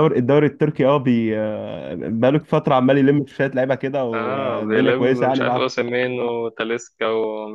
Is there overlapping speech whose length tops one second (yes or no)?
yes